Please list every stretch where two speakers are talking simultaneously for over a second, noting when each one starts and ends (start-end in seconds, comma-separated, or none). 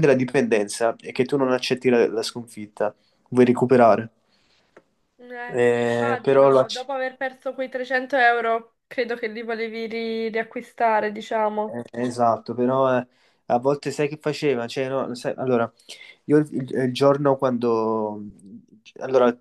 5.5-6.9